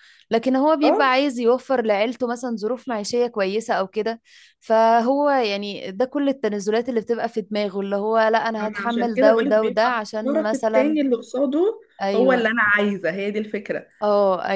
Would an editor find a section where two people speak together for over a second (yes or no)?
yes